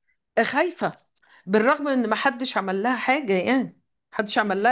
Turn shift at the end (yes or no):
yes